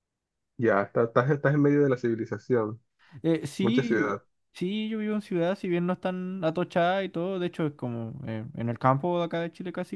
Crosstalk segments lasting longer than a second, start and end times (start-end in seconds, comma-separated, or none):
none